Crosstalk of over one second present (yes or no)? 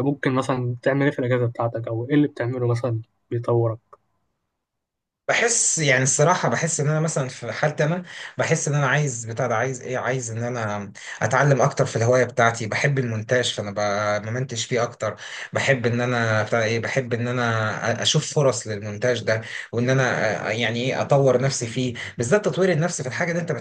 no